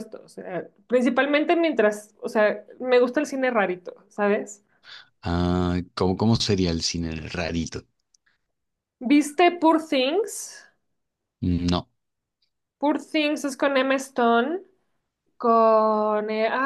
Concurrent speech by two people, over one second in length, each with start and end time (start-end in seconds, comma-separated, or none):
none